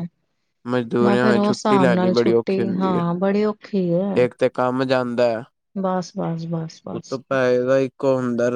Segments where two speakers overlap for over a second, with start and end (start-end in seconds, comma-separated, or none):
1.0-3.0